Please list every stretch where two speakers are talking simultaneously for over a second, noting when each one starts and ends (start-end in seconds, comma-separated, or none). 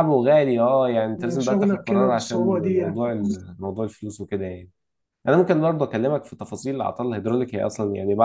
1.2-3.0